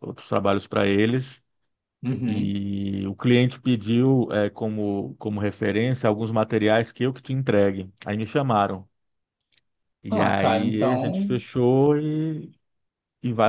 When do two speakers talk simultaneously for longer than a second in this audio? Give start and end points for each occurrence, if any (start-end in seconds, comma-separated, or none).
10.1-11.4